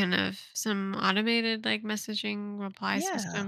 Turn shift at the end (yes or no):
no